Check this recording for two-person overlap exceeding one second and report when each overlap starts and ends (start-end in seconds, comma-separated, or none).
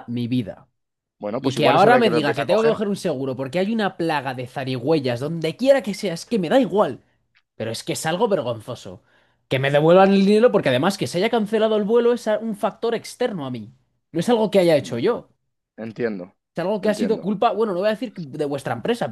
1.4-2.8